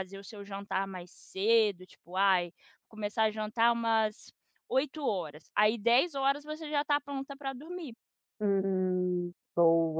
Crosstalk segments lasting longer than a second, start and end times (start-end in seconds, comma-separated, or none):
none